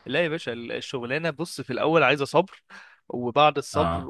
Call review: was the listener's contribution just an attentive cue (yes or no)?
yes